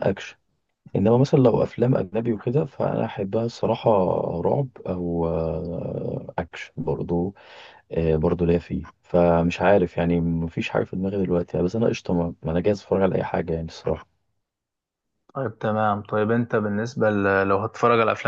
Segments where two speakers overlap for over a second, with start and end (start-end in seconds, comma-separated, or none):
none